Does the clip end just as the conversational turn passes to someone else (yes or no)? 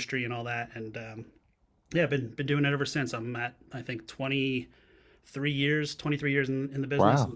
yes